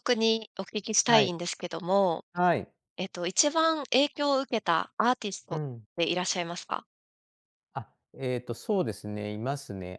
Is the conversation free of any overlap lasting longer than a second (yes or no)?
yes